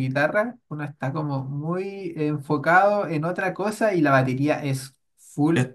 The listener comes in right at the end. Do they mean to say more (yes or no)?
no